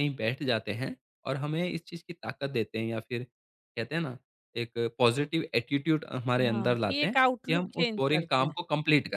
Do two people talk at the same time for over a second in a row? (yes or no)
yes